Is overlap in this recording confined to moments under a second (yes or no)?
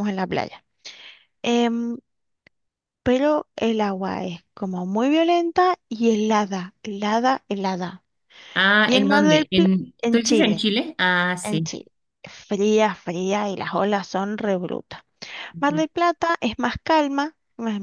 no